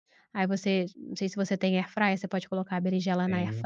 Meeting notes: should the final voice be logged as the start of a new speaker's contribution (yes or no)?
no